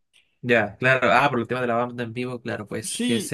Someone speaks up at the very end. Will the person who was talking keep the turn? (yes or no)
yes